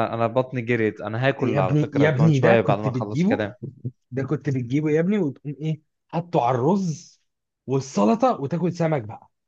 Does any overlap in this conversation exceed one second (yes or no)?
yes